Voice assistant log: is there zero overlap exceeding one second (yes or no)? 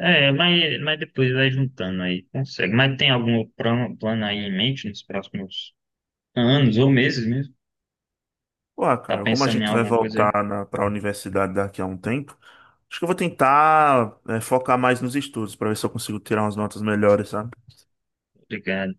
no